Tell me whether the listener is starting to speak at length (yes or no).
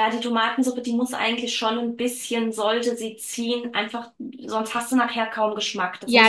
yes